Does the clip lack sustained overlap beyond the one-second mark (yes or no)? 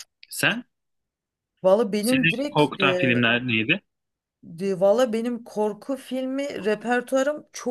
no